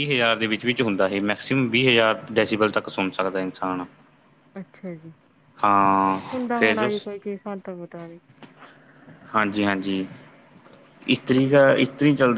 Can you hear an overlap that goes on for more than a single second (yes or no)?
no